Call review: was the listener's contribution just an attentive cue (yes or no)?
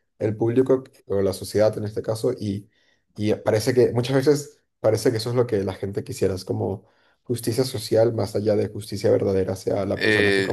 no